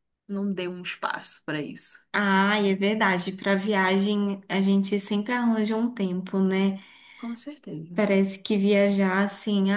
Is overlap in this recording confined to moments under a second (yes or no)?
yes